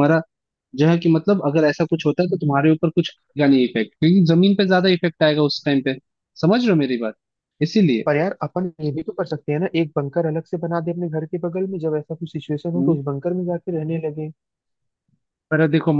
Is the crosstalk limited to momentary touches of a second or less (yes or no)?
yes